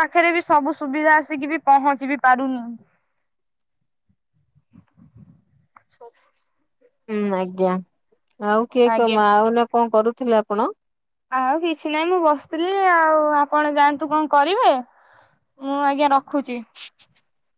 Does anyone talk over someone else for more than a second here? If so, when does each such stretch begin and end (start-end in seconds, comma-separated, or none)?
none